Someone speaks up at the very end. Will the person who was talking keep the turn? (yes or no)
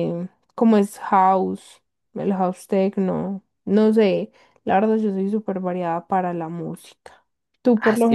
no